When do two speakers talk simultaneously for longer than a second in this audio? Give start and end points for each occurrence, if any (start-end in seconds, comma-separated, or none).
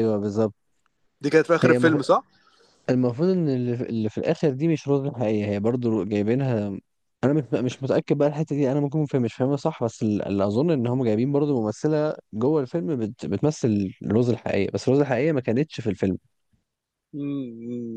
none